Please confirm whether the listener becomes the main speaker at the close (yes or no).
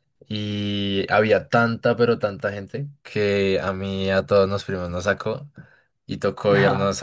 no